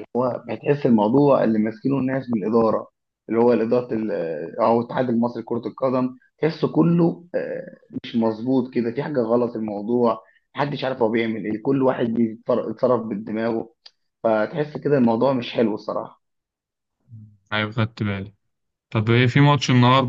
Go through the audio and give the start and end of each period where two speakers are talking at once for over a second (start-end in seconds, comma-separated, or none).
none